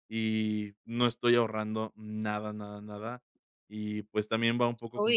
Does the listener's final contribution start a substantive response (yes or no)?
no